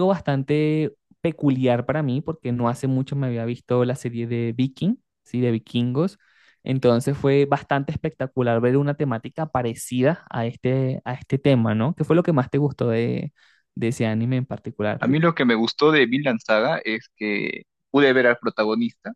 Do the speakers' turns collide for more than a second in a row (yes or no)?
no